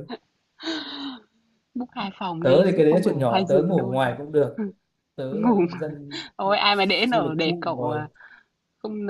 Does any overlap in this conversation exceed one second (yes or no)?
yes